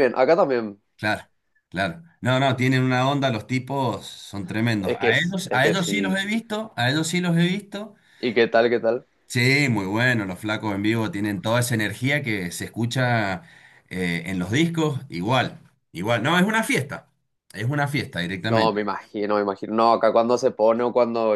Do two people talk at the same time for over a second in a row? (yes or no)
yes